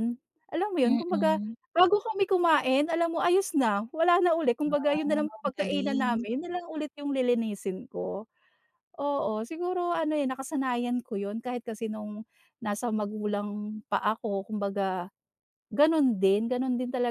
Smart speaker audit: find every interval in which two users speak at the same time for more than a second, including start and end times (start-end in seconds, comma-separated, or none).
4.7-6.1